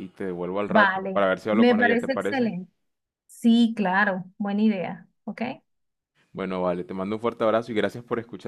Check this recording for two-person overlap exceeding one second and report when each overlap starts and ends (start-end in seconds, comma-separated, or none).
0.6-2.5